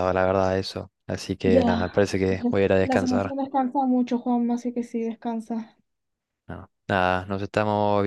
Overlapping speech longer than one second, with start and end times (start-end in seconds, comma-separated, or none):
1.4-3.4